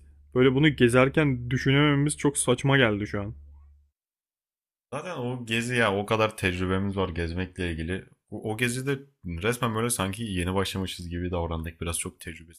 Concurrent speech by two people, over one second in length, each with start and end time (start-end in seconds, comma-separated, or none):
none